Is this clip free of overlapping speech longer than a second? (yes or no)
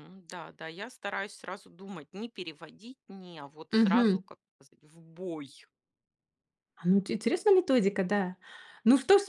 yes